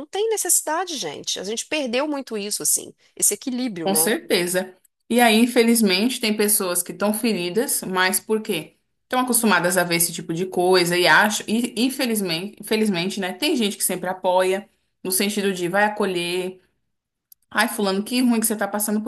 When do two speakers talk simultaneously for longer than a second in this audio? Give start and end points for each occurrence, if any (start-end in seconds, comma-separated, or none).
none